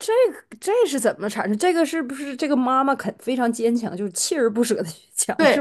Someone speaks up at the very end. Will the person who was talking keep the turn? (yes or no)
no